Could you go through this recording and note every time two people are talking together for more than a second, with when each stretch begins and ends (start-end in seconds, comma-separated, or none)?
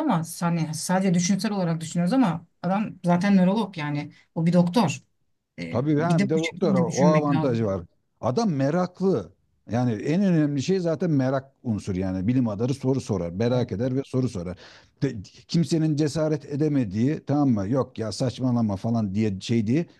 5.7-7.6